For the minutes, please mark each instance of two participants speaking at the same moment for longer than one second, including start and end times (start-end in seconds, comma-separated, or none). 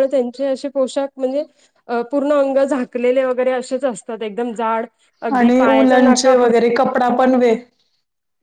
5.4-6.7